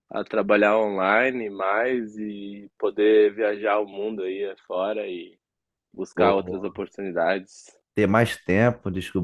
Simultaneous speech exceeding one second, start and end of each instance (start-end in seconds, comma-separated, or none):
none